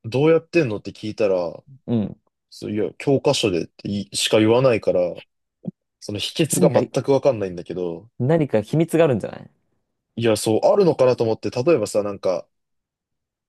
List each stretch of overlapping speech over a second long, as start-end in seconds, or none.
none